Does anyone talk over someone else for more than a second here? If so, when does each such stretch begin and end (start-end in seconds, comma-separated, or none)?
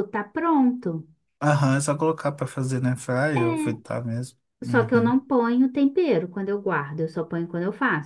none